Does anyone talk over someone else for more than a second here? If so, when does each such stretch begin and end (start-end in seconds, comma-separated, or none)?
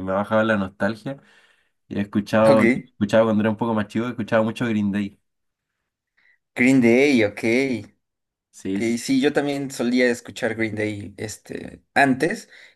none